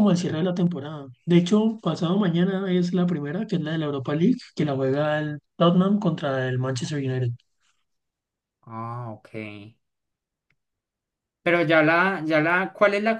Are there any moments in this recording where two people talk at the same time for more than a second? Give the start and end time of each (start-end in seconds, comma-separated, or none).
none